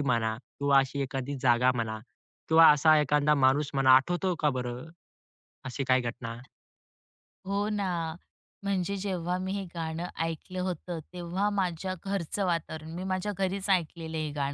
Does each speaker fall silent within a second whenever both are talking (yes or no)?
yes